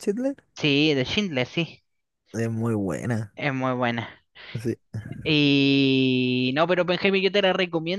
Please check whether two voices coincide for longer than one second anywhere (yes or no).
no